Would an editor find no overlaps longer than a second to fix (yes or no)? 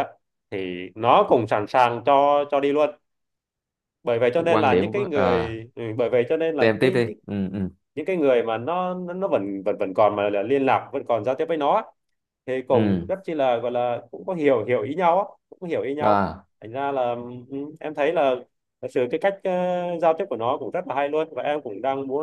no